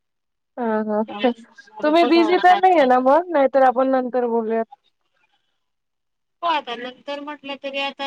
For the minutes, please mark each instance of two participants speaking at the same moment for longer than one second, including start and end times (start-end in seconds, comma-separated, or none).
0.9-3.0